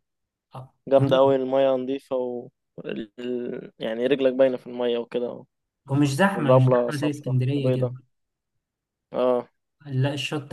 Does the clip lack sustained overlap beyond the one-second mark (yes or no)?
no